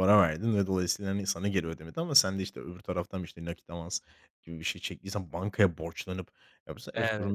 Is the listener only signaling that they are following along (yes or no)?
yes